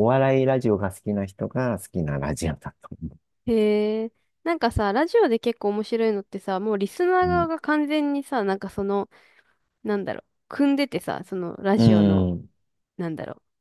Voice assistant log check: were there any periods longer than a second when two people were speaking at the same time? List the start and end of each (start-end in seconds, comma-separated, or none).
none